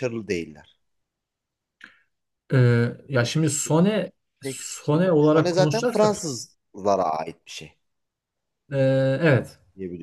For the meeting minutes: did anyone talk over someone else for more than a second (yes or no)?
yes